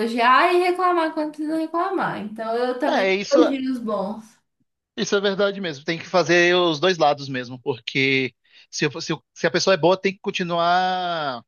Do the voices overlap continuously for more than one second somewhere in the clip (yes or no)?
no